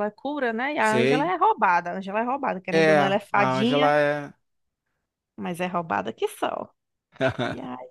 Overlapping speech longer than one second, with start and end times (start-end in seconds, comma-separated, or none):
2.7-3.9